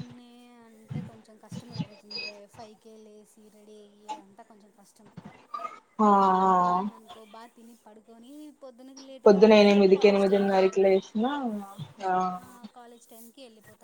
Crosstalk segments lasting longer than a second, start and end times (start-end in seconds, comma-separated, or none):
9.2-10.9